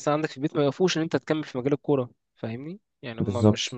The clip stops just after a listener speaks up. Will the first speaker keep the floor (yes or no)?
yes